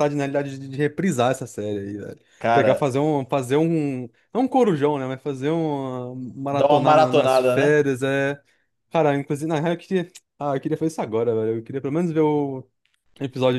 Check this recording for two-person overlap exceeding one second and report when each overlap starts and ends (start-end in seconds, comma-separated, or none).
6.5-7.8